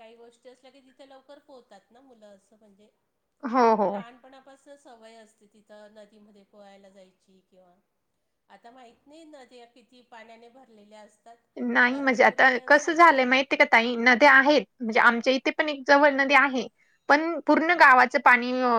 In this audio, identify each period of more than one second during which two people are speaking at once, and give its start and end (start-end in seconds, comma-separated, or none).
11.9-13.2